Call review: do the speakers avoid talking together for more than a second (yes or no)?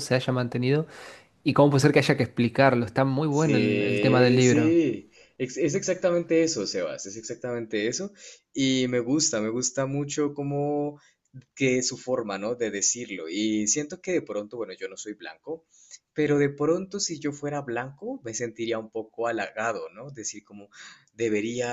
no